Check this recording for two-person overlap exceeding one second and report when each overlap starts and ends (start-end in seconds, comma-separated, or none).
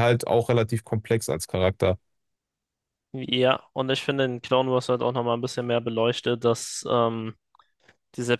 none